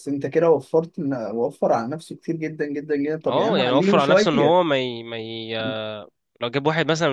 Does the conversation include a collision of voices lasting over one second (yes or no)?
yes